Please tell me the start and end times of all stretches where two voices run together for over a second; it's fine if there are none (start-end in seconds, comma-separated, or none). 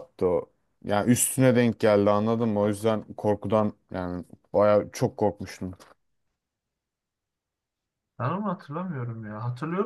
none